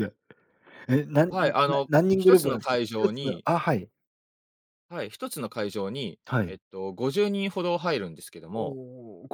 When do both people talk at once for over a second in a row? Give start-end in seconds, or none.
1.3-3.5